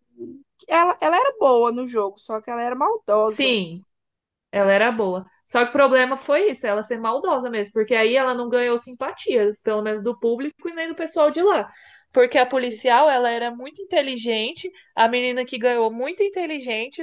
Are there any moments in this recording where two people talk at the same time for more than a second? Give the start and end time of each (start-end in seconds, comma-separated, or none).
none